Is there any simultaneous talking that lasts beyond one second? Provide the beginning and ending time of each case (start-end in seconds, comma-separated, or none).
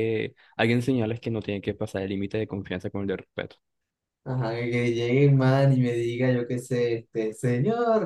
none